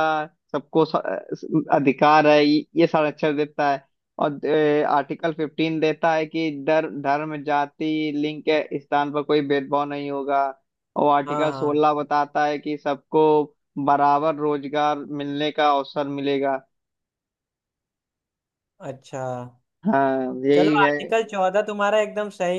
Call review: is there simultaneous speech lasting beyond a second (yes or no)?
no